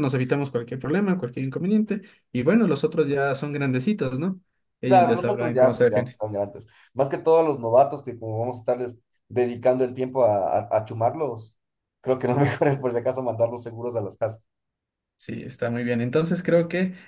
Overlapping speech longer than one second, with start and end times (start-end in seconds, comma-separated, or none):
4.8-6.1